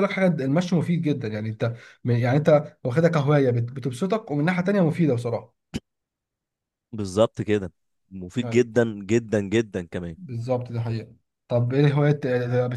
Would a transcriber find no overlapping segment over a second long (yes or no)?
yes